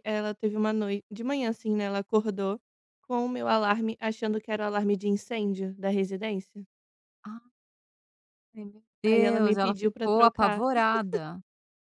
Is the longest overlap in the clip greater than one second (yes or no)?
yes